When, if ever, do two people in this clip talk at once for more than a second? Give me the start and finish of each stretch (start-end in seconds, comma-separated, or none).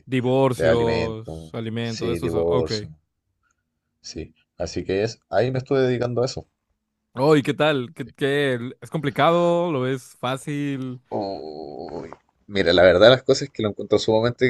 0.5-2.7